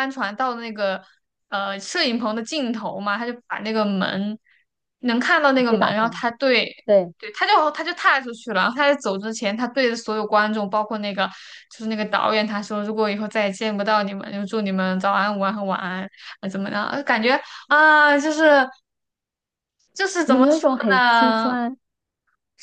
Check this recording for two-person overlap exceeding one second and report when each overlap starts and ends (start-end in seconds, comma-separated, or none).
20.3-21.6